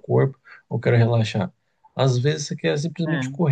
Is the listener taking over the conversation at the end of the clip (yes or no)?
no